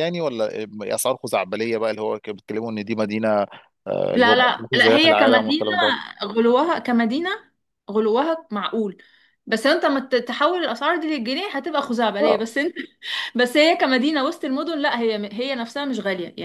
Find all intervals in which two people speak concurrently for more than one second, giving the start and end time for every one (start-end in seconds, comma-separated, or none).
4.1-5.8